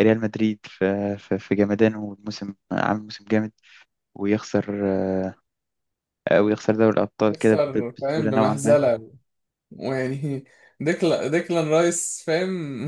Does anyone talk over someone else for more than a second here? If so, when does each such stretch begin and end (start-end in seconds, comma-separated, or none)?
7.2-8.8